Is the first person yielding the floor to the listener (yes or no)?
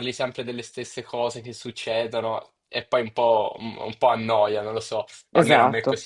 yes